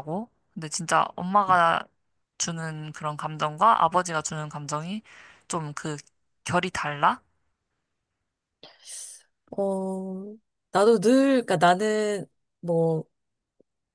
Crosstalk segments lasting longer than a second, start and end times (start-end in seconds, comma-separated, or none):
none